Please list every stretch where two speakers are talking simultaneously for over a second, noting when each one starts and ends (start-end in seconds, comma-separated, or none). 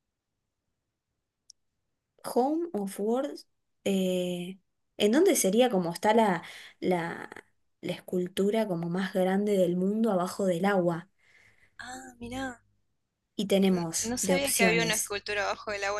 13.7-15.2